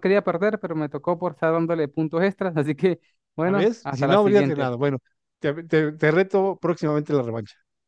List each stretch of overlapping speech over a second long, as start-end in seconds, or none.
3.4-4.7